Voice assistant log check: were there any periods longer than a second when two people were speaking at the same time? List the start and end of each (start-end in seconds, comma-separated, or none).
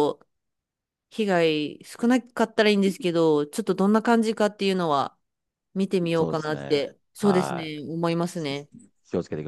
6.1-7.8